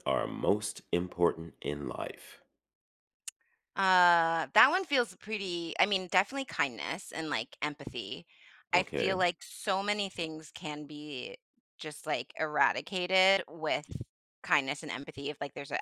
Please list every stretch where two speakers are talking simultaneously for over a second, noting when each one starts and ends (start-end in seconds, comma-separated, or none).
none